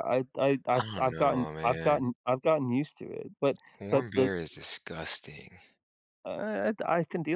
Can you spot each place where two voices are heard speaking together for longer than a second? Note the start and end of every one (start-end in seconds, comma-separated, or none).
0.7-2.0